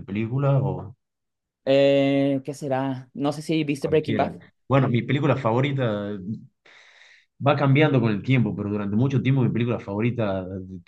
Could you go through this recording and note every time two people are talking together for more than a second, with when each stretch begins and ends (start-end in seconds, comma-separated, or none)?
none